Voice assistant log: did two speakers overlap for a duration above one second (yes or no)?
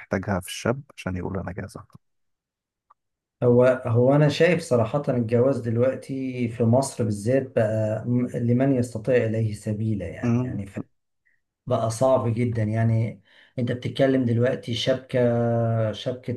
no